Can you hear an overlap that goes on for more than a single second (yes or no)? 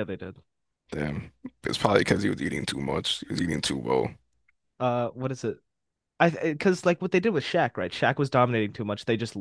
no